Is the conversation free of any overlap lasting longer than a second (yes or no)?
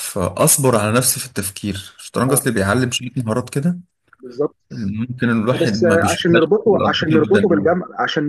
no